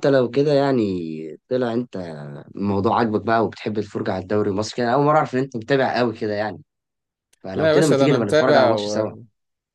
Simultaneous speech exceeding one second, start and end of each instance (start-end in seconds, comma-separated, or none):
7.5-9.1